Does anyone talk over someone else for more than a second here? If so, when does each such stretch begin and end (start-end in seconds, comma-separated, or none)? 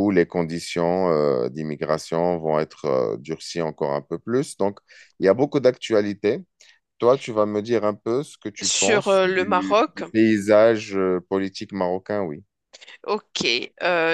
8.6-10.0